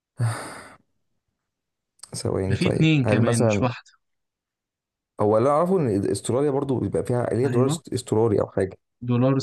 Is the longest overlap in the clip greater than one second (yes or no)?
yes